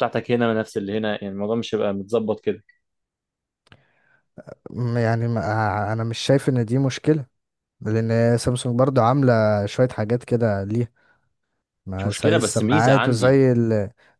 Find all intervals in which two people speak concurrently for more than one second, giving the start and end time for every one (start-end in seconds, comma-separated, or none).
12.0-13.4